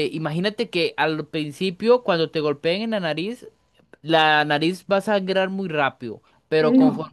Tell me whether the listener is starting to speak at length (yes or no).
no